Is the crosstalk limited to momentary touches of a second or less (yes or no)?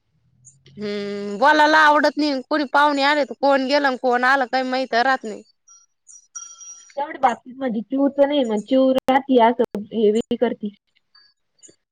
yes